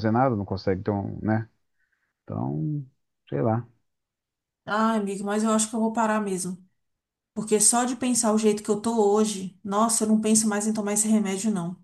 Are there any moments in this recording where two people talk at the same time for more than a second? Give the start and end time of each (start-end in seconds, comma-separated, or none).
none